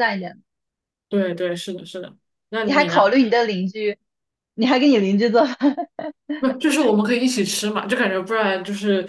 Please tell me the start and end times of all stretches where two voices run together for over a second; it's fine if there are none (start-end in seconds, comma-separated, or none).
none